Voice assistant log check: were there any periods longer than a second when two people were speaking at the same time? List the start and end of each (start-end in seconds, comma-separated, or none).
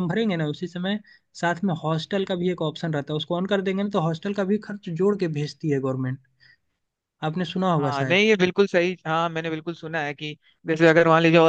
none